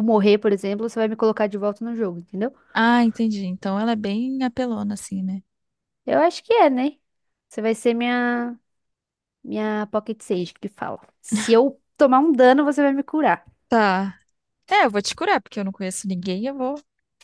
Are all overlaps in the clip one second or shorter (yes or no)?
yes